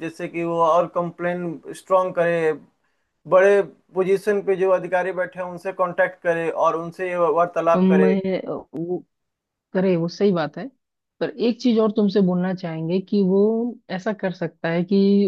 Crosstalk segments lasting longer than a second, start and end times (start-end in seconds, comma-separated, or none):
none